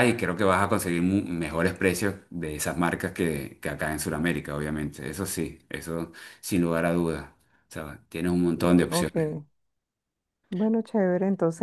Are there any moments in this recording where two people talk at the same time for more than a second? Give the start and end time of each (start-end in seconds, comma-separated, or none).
none